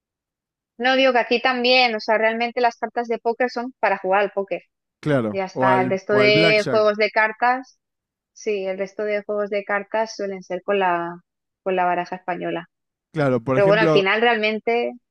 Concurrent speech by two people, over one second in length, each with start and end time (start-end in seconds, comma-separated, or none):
5.3-6.9